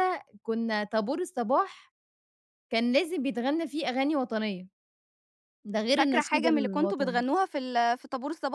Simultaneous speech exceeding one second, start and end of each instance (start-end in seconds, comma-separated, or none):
6.0-7.2